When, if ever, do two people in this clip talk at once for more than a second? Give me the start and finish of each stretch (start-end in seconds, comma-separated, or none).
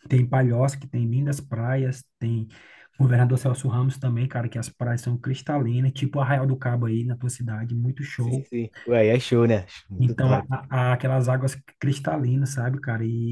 none